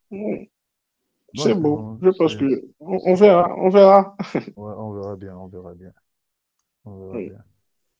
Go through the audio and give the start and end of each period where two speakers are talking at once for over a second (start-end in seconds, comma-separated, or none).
1.3-2.6